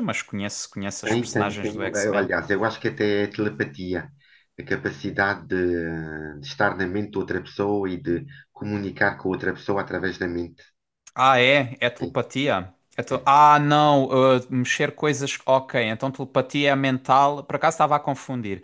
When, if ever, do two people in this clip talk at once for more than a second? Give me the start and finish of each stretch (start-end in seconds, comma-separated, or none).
1.0-2.3